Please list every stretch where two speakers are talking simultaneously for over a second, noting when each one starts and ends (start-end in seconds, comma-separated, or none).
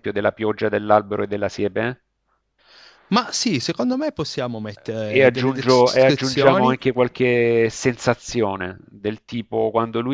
5.2-6.8